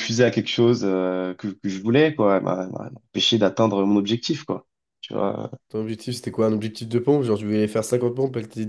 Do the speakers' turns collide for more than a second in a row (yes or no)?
no